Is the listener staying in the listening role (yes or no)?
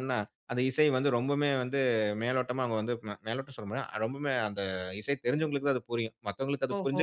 yes